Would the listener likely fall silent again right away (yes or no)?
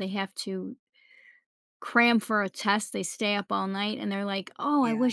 yes